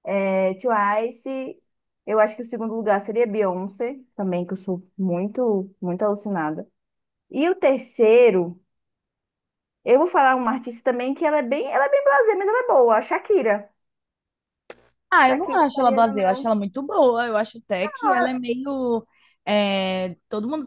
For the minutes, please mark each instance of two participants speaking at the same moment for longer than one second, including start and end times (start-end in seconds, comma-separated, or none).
15.3-16.5